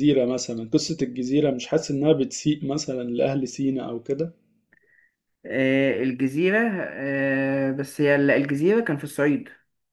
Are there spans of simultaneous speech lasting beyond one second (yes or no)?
no